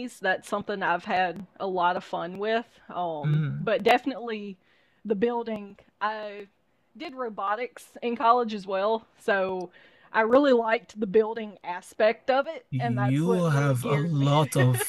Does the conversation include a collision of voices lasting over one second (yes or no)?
yes